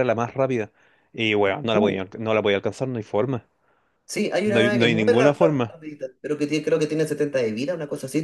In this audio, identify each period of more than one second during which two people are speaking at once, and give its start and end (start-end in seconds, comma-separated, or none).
4.4-5.8